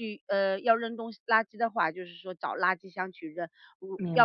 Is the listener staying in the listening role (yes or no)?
yes